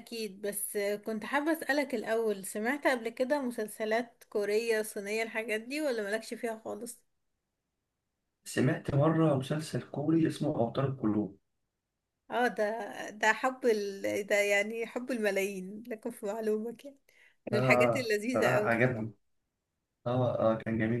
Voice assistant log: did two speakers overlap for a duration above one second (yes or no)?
yes